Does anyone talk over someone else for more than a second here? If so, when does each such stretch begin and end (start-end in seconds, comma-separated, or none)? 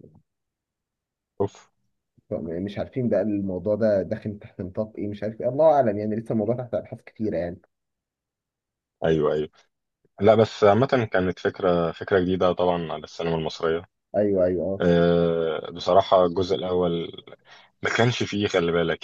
none